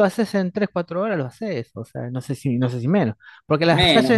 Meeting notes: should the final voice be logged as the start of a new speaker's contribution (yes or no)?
no